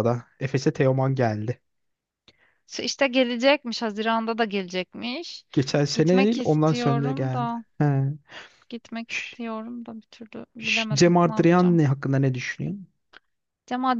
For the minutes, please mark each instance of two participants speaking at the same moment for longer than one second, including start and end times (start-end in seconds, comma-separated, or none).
5.9-7.6, 10.6-11.8